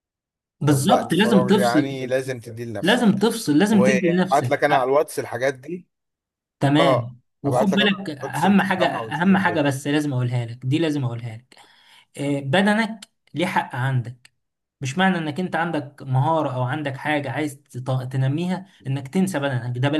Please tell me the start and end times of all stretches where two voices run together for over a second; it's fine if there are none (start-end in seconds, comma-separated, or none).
0.7-2.0, 3.7-4.9, 6.8-9.6